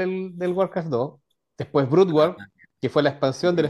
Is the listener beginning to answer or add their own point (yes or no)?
no